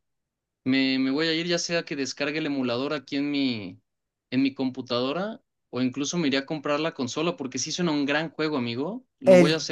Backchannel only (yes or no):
no